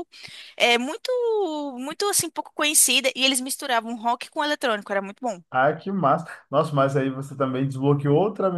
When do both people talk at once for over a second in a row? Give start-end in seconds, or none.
none